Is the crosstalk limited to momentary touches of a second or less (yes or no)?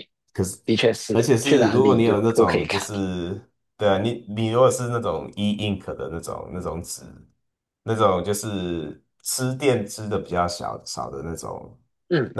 no